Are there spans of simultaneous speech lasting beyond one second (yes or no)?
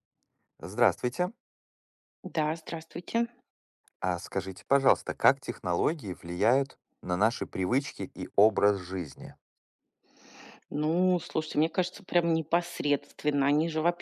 no